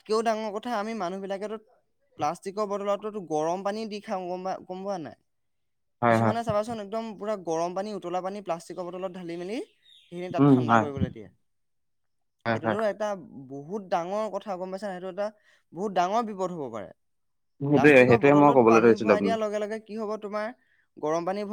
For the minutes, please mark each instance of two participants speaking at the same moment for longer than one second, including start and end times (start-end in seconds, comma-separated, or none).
17.7-19.4